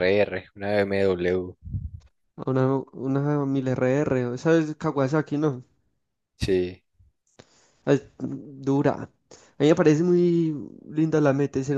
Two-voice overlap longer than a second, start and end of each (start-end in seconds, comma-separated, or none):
none